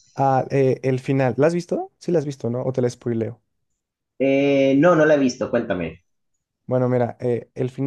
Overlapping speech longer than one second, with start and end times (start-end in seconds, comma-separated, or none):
none